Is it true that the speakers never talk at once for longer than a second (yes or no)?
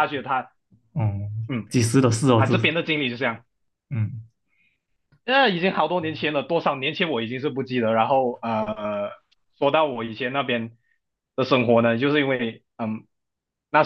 yes